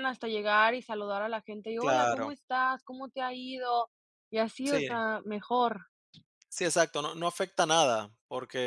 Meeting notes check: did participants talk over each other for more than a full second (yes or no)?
no